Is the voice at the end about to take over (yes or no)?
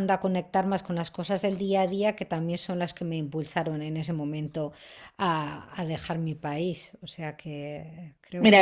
yes